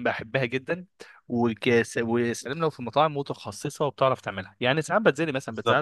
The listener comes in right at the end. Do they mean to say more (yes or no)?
no